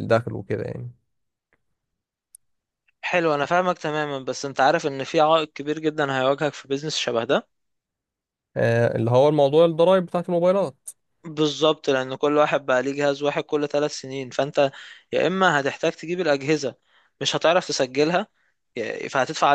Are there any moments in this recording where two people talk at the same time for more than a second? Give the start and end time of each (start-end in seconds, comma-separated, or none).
none